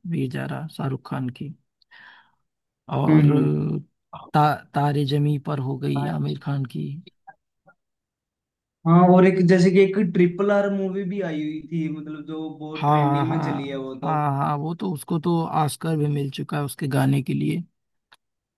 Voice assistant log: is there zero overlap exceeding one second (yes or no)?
no